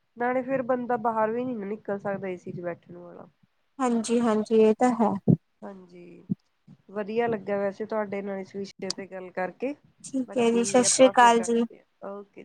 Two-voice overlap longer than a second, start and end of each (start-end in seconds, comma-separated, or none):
10.3-11.6